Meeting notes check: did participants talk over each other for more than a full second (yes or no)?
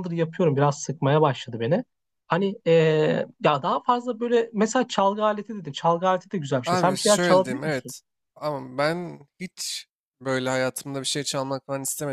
yes